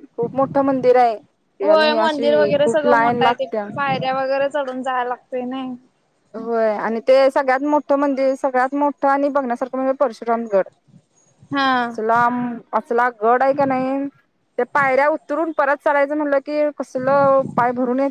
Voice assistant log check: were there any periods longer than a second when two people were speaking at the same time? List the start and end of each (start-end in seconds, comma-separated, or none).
none